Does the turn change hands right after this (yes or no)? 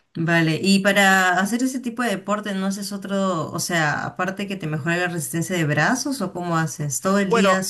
yes